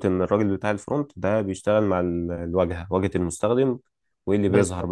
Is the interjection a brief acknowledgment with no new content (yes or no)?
yes